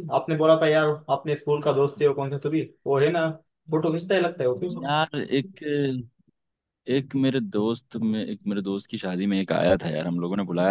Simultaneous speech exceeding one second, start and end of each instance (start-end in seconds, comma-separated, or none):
none